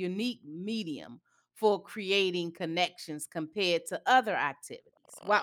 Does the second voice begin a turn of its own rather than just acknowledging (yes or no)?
no